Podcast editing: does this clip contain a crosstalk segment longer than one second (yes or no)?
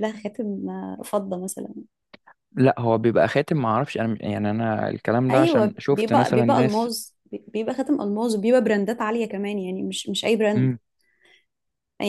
yes